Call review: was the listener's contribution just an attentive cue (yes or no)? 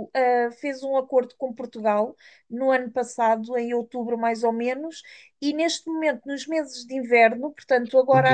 no